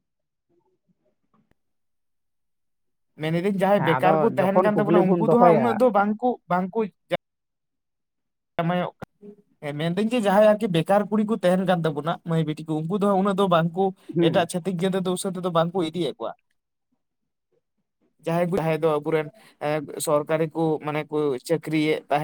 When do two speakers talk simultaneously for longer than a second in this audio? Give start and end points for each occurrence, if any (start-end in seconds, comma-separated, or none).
3.8-5.8